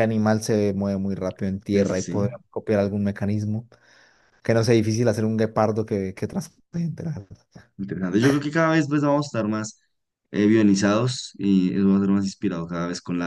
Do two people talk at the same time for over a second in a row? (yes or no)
no